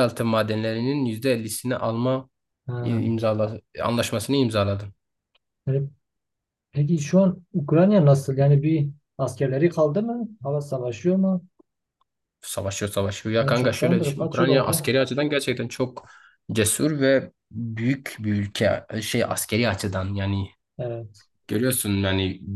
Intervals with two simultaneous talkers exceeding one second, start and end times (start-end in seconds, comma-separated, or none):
13.4-14.9